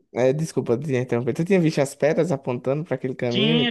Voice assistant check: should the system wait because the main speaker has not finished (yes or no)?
no